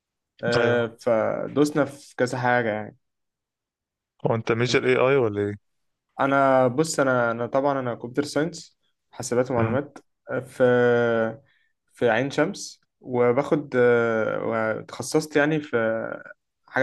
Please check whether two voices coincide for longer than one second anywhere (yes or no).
no